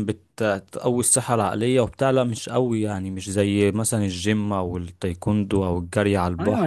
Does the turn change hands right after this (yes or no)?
yes